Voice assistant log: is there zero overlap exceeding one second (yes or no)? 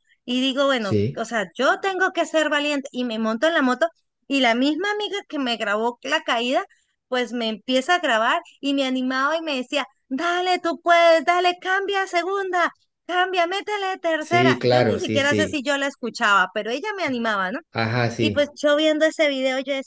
no